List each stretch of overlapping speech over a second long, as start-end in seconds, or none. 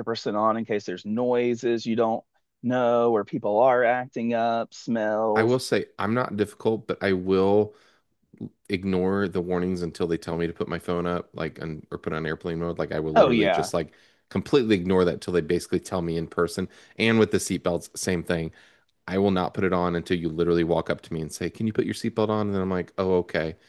none